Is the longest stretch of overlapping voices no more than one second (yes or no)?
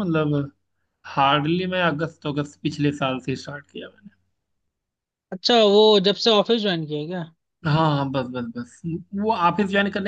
yes